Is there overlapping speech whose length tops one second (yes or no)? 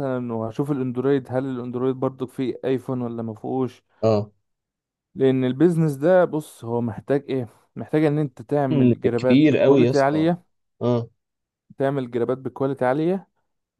yes